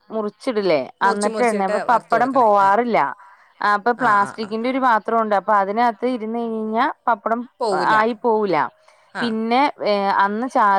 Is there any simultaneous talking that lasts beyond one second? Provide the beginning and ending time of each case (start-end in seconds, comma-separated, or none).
1.0-2.8